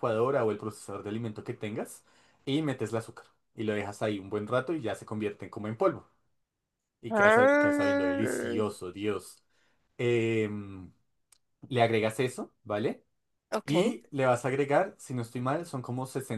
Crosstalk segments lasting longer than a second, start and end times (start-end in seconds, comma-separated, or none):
7.1-8.6